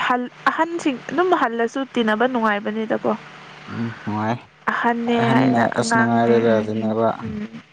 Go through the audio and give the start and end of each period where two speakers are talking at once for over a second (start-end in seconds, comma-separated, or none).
5.3-6.7